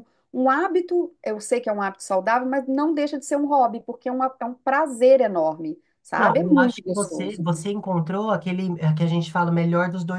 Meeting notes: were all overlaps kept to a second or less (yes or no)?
no